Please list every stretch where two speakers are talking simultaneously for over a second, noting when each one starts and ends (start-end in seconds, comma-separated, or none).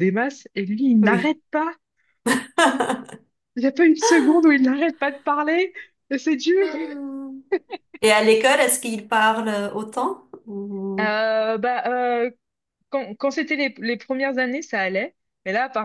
none